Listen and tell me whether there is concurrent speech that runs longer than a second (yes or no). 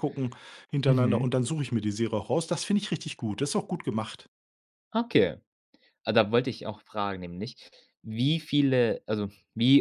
no